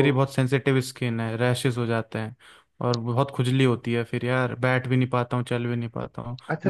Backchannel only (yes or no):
no